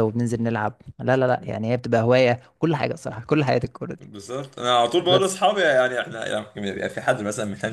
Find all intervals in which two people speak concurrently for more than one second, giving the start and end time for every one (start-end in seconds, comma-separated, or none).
none